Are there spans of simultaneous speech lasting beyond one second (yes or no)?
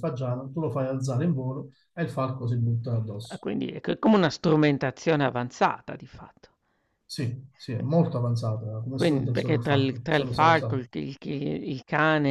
yes